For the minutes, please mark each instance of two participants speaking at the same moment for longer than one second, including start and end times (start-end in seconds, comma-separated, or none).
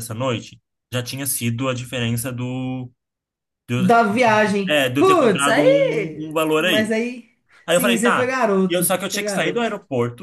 4.7-7.0, 7.7-9.7